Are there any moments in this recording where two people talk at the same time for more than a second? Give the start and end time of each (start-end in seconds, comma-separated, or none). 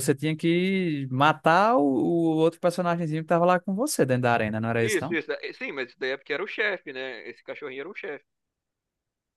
none